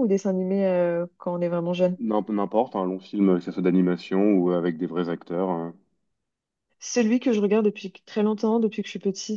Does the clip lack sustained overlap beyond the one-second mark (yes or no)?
yes